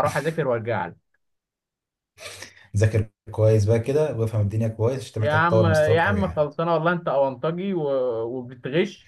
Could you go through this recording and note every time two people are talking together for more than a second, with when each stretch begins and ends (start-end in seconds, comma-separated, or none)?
5.2-6.5